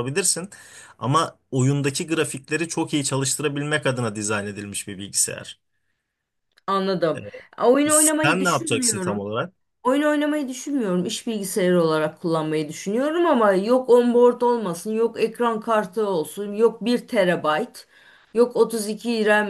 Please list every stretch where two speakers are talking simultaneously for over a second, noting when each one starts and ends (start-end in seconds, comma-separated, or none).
7.9-9.3